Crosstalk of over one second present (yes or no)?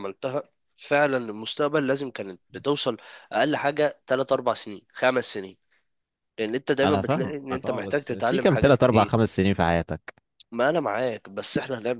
yes